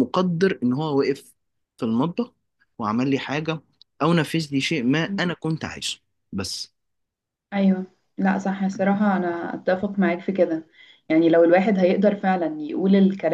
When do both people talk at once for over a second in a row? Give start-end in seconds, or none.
none